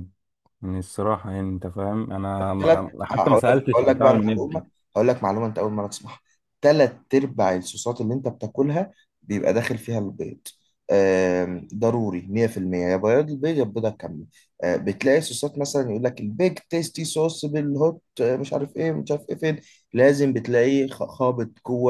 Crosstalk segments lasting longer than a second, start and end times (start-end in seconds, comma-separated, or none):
2.6-4.6